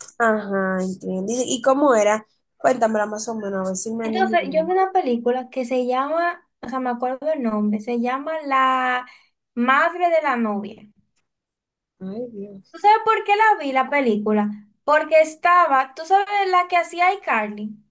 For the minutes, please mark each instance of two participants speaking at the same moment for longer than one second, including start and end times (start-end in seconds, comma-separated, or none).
none